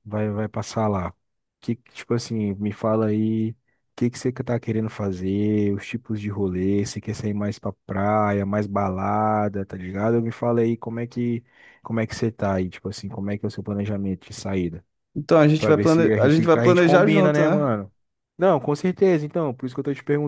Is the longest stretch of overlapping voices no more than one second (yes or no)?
no